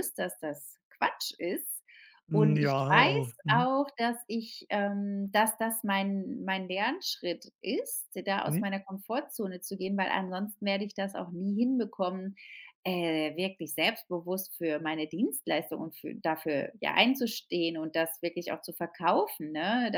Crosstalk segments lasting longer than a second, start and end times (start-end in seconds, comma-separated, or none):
2.3-3.7